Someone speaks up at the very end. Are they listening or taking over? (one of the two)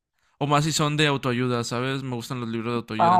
taking over